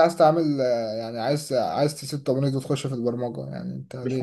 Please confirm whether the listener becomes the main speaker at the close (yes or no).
yes